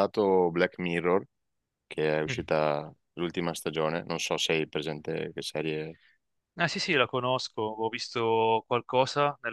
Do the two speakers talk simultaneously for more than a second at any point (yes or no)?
no